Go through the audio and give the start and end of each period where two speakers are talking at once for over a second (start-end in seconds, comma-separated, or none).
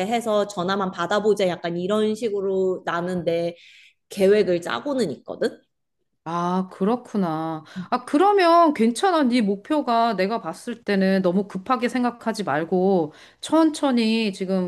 none